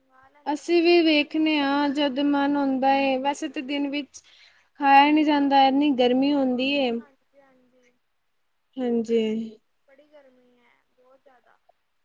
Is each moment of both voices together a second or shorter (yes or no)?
yes